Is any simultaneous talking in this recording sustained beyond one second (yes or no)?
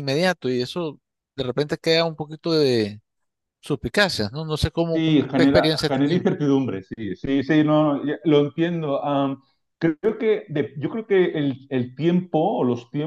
yes